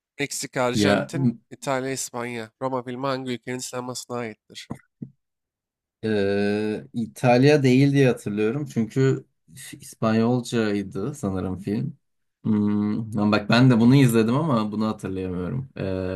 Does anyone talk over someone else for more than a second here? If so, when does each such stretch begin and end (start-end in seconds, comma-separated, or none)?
none